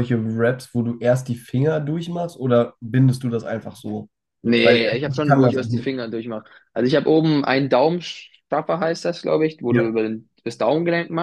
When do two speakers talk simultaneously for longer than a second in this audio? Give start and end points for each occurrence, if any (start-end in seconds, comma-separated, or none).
4.6-5.9